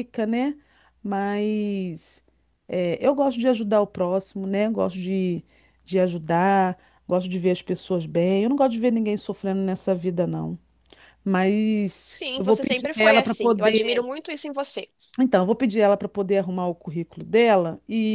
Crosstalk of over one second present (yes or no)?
yes